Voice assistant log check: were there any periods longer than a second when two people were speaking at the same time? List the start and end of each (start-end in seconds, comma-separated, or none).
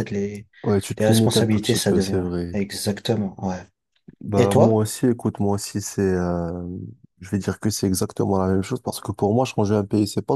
1.0-2.6